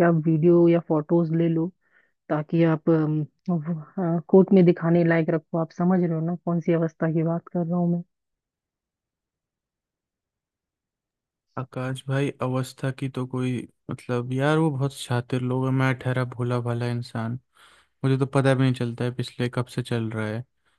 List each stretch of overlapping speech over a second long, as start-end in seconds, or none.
none